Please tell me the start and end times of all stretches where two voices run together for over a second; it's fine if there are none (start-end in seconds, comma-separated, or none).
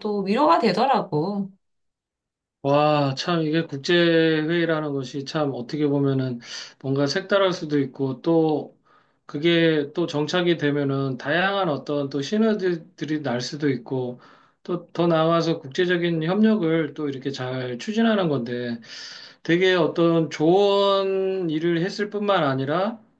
none